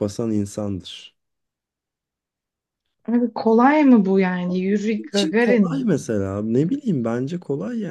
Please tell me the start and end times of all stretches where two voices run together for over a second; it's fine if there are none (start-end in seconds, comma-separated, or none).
4.5-5.9